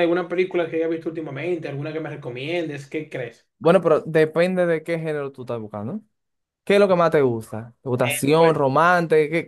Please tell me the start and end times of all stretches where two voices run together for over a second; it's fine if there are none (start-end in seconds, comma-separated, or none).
none